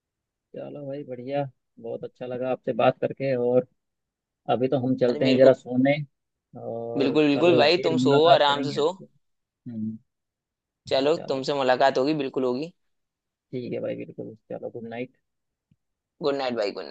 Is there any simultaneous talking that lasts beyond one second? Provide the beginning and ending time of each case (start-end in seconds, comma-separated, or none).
7.0-8.9